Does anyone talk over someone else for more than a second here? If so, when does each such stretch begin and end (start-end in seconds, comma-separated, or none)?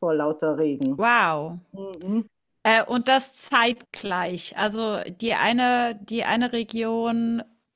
none